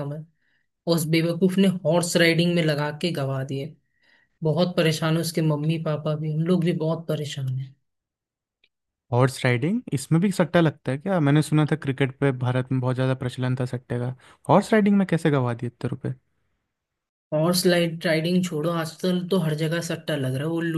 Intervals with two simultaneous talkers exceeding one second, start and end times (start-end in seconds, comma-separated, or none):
none